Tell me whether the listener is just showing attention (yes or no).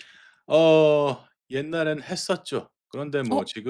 yes